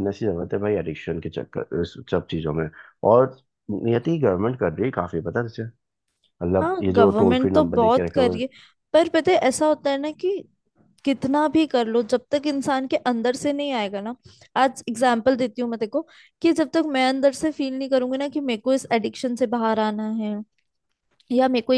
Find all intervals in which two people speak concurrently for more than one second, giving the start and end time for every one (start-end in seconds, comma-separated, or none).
6.6-8.4